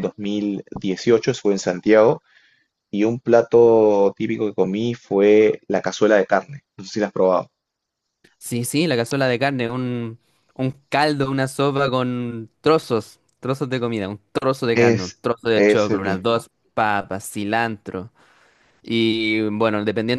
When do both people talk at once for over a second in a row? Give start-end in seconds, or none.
14.7-16.5